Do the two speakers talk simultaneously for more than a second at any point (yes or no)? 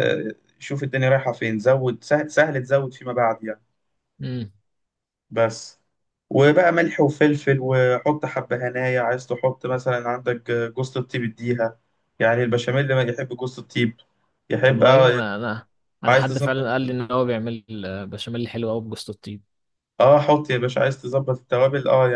no